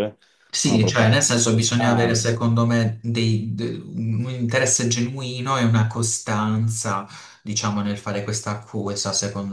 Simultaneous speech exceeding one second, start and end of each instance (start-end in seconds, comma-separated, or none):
0.6-2.3